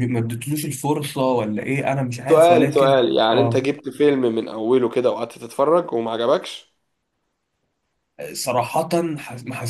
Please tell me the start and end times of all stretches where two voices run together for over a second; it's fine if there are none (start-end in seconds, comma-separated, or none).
2.3-3.6